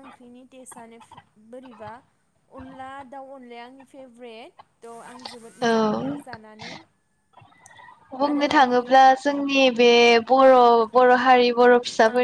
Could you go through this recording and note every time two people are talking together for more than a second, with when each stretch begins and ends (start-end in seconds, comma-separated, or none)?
none